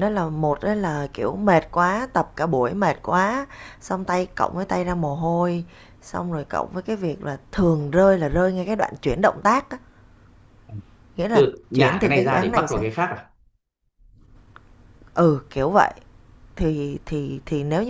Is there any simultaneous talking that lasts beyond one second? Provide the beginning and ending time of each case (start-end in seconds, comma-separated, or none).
11.3-12.8